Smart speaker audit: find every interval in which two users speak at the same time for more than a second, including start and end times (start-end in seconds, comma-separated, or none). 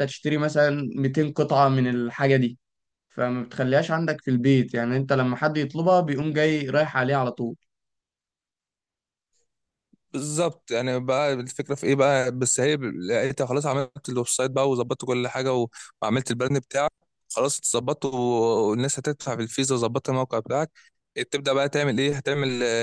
none